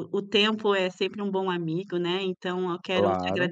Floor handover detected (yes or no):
no